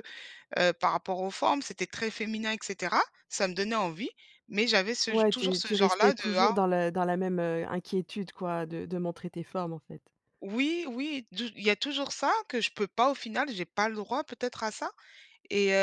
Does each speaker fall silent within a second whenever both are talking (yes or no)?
no